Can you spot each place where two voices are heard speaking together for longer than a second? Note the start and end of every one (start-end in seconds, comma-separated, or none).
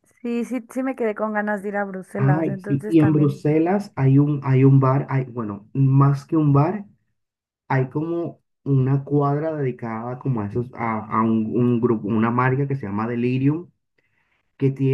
2.2-3.4